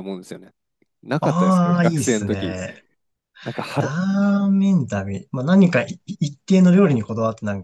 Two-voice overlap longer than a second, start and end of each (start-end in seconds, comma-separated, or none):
1.2-2.5